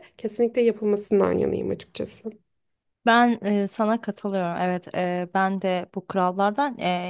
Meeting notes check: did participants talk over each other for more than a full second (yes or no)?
no